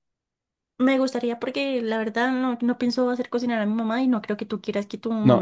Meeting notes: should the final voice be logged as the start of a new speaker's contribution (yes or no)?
yes